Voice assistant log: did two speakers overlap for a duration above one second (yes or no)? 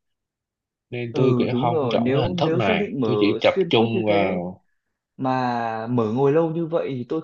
yes